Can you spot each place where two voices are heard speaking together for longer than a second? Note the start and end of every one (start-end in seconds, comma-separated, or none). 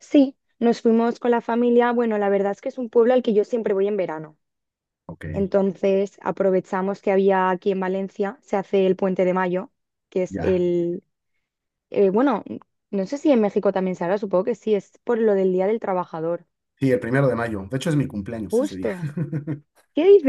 none